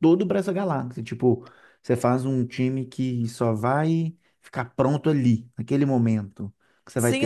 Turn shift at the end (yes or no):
yes